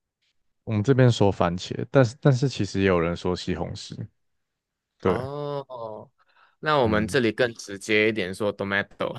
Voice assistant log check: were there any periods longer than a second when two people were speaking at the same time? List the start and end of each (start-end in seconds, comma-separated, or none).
none